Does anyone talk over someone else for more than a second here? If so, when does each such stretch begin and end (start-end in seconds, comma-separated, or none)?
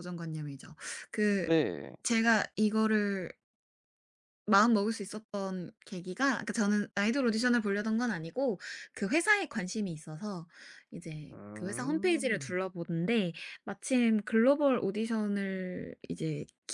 11.3-12.6